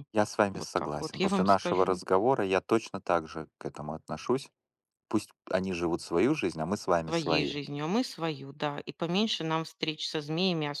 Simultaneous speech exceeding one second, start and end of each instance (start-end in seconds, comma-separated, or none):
0.5-2.0